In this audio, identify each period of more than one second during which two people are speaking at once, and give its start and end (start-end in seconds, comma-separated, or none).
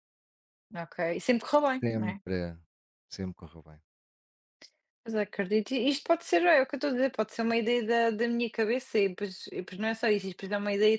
none